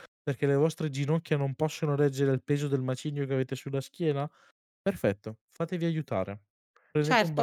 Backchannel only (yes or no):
no